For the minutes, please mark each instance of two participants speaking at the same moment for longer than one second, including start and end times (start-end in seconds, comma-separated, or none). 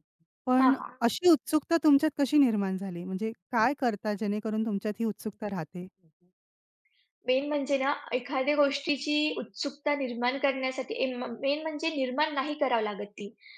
none